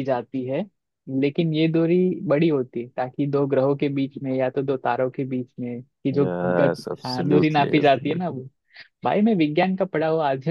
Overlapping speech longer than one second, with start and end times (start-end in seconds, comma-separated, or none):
6.2-8.4